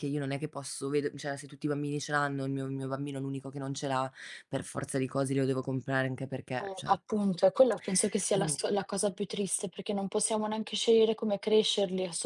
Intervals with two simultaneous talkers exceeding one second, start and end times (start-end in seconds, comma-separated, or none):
none